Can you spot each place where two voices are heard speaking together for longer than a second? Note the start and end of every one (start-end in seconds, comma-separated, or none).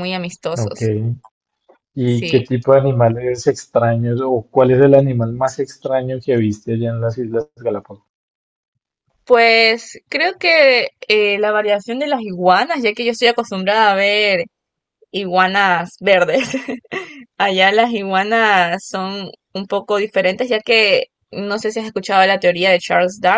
none